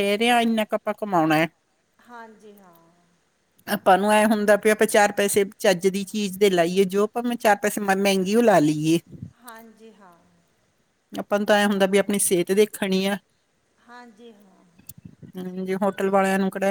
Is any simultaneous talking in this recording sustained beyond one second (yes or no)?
no